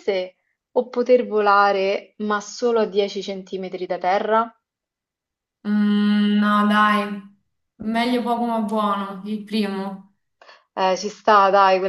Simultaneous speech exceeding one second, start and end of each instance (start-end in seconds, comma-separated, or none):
none